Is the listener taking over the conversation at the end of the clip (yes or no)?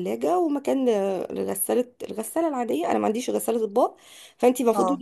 no